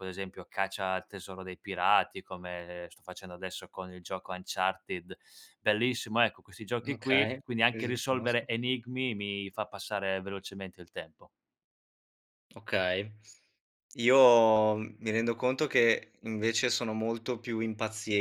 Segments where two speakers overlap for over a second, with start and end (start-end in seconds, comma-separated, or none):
6.8-8.5